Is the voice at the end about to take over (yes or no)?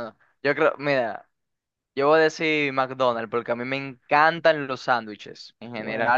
no